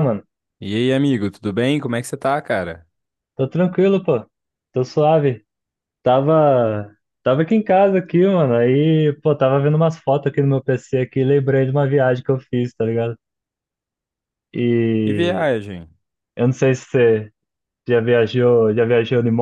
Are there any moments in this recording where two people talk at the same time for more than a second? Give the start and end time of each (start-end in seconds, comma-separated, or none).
none